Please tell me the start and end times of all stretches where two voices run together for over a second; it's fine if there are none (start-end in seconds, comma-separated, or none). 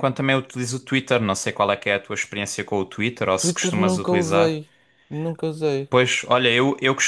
3.4-4.6